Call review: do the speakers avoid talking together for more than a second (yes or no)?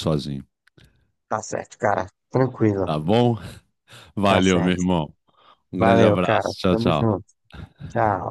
no